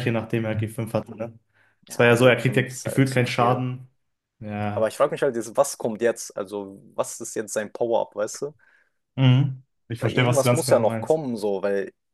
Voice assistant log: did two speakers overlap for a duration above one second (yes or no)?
yes